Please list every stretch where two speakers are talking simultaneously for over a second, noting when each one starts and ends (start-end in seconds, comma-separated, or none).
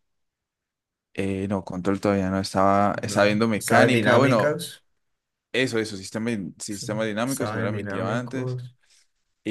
2.9-4.6, 7.2-8.6